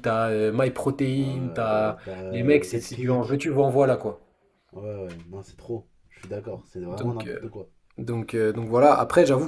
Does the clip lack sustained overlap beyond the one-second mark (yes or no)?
no